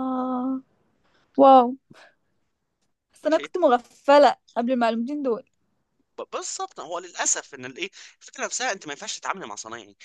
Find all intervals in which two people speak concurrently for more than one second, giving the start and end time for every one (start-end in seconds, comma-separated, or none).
none